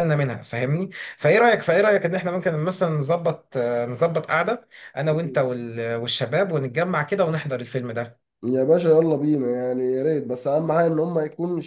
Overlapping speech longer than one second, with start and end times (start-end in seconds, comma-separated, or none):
none